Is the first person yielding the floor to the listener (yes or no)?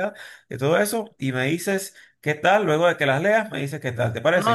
yes